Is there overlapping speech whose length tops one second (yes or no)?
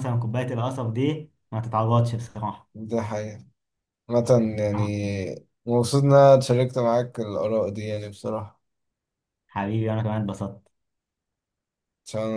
no